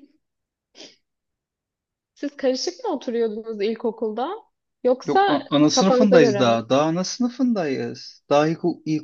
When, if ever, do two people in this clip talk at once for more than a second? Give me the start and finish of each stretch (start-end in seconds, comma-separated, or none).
5.0-6.6